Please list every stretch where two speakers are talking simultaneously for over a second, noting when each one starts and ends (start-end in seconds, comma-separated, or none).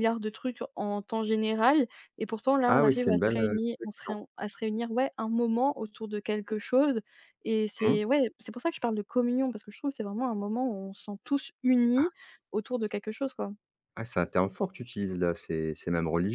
2.7-4.2